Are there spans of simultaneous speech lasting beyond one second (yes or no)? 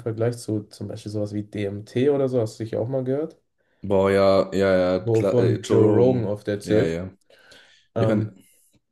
yes